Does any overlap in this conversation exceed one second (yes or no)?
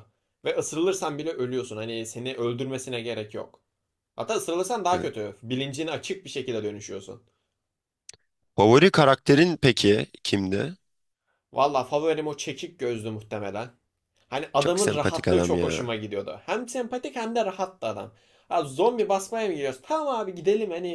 yes